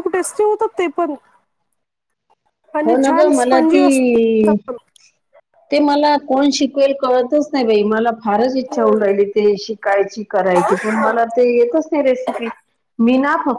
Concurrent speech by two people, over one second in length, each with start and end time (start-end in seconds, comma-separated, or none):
2.9-4.5